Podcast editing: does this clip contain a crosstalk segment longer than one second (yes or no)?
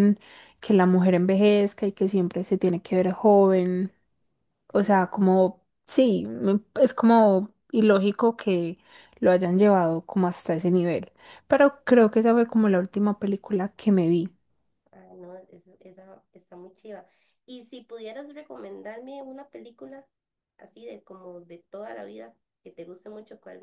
no